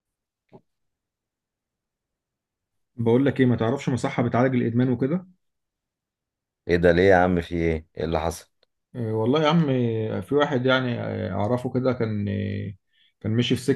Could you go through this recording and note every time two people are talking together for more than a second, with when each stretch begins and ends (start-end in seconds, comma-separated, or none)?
none